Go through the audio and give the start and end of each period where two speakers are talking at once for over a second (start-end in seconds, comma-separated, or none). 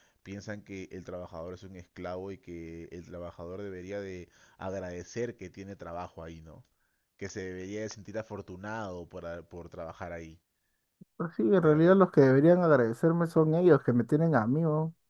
none